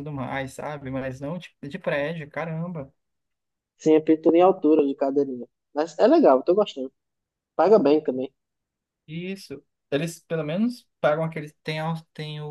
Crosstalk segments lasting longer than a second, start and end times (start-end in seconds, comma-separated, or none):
none